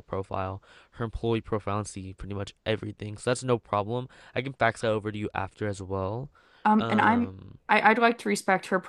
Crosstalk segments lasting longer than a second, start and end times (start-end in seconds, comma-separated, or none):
none